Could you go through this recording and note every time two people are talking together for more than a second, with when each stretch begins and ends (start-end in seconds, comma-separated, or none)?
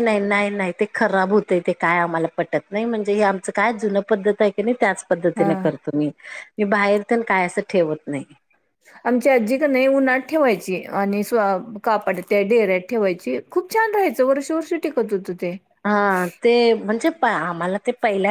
none